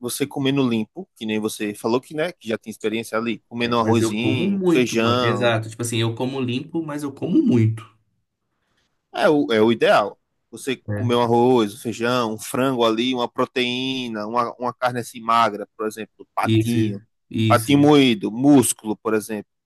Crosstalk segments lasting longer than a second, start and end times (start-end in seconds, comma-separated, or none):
3.6-5.5